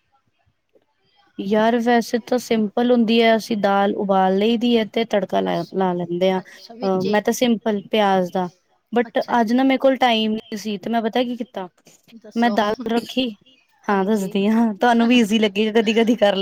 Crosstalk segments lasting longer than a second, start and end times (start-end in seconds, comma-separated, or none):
none